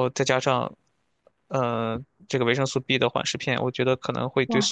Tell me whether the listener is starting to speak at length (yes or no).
yes